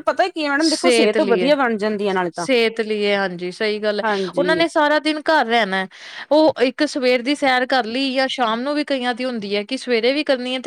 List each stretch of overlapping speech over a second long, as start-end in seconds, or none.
none